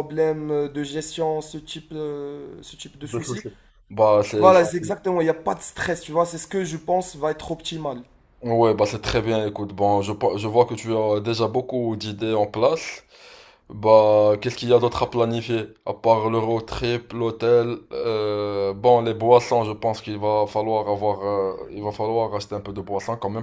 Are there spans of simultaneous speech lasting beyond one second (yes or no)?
no